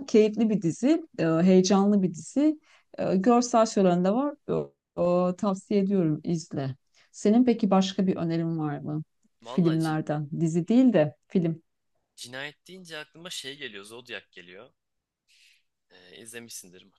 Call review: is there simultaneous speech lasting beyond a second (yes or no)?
no